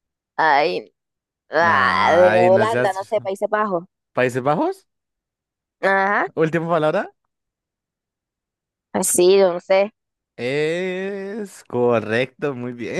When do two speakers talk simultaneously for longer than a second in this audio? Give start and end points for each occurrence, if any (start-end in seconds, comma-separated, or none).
1.6-3.1